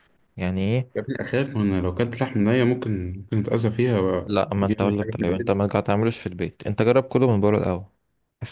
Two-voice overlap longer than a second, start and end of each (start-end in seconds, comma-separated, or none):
4.2-5.6